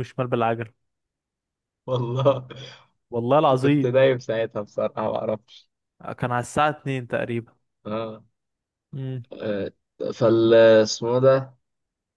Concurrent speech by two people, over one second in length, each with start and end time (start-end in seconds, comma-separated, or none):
none